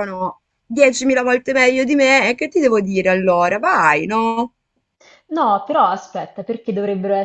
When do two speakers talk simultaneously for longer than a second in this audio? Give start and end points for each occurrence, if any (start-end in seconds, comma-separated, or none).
none